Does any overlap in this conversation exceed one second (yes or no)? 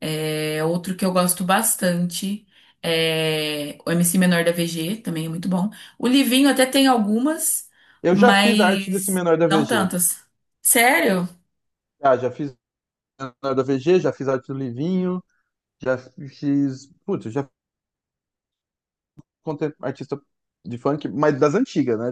yes